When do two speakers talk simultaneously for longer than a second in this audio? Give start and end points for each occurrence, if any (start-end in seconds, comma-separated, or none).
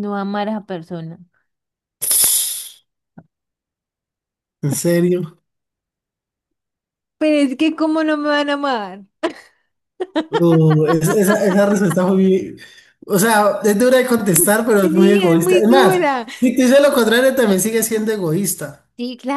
14.8-16.3